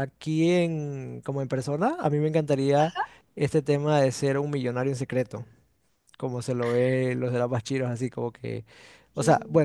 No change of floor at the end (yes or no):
yes